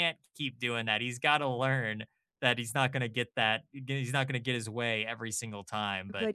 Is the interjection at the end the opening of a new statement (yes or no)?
yes